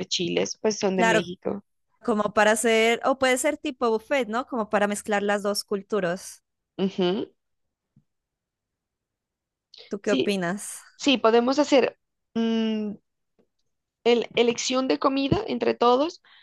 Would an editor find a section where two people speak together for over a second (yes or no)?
no